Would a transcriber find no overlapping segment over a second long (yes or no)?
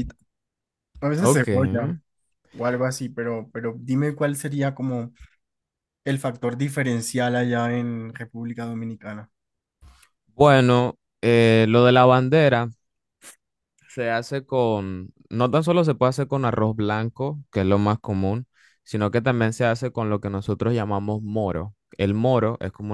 yes